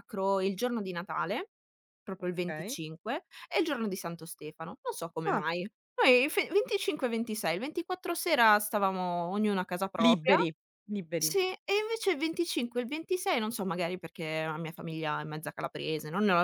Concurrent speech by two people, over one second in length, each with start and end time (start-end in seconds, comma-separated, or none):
none